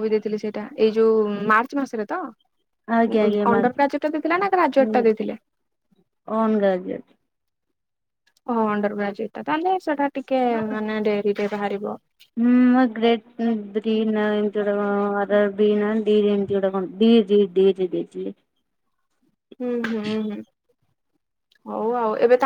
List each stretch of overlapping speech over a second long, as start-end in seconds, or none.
none